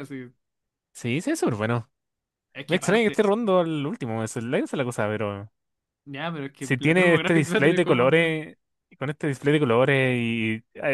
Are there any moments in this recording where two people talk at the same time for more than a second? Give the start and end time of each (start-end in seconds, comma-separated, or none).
6.6-8.3